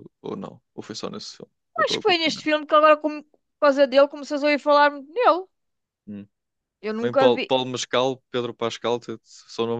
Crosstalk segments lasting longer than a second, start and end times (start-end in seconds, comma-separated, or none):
none